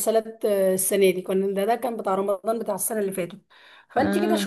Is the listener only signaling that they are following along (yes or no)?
yes